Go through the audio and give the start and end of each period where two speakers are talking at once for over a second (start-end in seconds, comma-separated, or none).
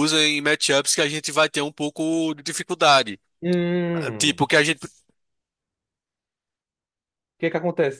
none